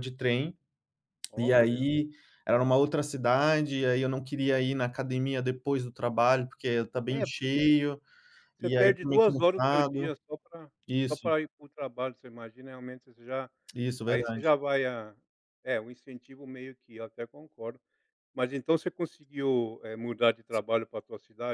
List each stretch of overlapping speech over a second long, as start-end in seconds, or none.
8.6-10.1